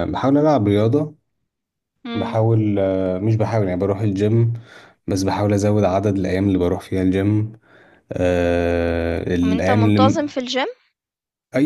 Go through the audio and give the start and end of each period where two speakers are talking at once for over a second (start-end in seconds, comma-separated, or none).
none